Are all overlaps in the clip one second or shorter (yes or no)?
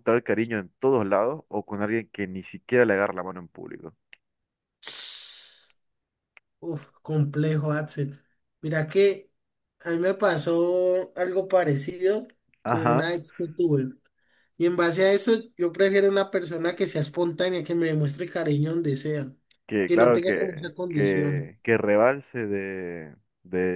no